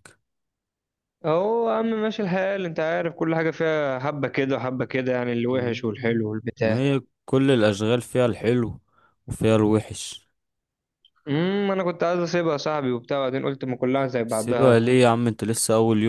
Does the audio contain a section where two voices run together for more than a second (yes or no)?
no